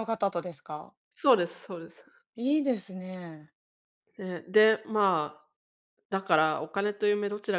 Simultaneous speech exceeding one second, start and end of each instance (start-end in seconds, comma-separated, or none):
none